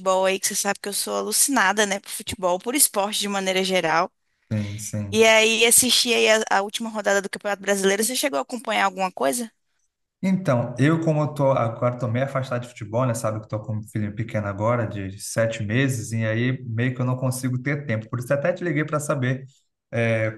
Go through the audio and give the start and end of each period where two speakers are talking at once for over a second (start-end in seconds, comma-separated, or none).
none